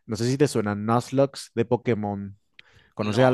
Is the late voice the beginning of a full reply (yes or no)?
yes